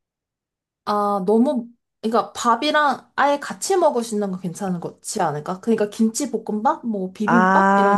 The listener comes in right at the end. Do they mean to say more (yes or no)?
yes